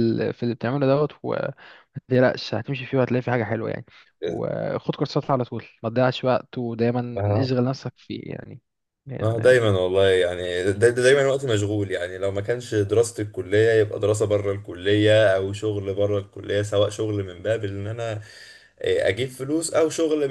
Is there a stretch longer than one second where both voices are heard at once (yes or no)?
no